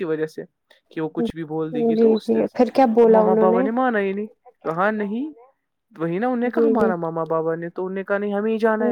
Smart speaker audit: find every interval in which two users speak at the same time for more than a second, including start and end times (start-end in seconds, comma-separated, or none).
none